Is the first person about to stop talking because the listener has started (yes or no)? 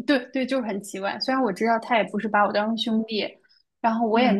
no